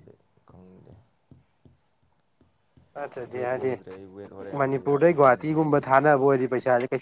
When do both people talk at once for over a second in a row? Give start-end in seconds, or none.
4.6-5.9